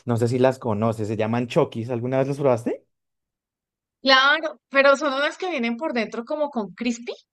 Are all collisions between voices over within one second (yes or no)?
yes